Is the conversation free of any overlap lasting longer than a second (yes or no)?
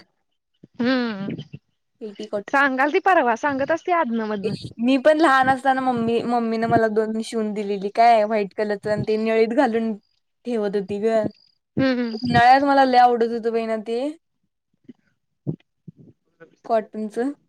yes